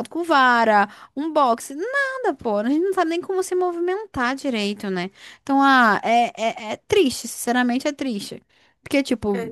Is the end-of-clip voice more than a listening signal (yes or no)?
no